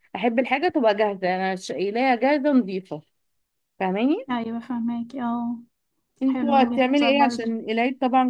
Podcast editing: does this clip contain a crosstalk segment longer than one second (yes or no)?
yes